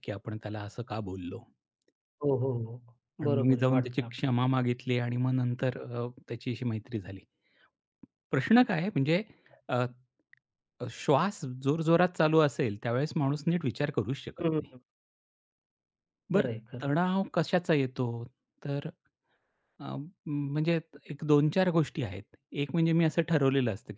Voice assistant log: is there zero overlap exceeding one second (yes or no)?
no